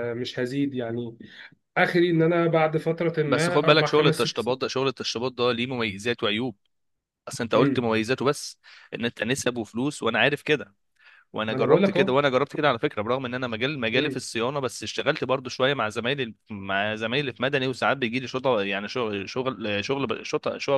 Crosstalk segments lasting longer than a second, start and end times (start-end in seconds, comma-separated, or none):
3.3-4.6